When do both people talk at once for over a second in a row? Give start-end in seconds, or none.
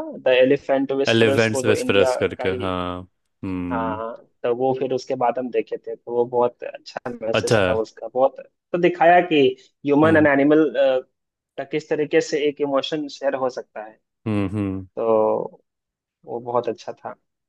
1.1-2.8